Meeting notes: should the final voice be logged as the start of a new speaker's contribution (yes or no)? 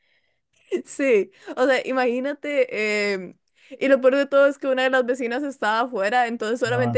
no